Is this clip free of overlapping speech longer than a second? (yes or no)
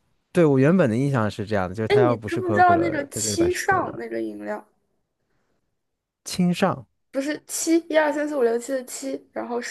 no